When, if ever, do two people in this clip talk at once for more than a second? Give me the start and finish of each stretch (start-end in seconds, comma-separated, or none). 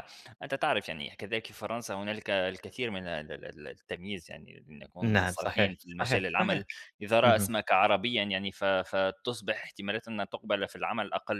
5.0-6.6